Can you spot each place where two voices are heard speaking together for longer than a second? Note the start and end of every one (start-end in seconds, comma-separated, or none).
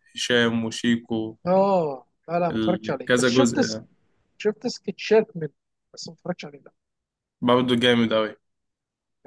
2.5-3.8